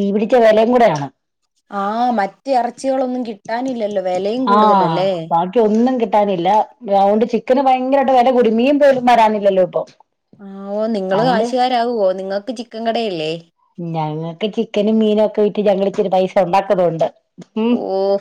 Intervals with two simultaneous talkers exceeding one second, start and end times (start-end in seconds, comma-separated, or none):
none